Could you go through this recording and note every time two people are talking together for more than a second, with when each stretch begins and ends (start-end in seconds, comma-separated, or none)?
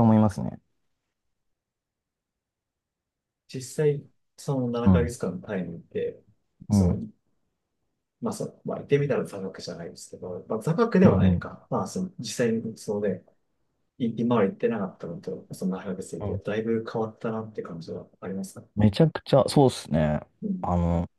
none